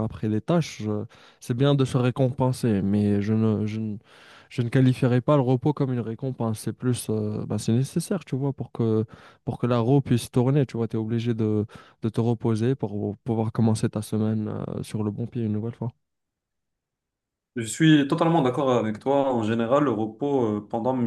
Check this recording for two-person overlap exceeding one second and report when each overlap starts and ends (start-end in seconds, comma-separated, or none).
none